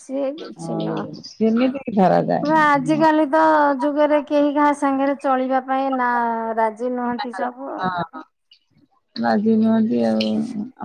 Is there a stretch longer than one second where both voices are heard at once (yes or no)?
no